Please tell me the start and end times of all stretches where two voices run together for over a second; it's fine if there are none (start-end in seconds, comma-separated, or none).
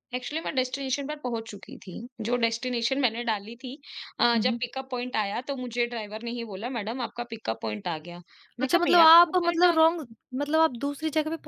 8.6-10.0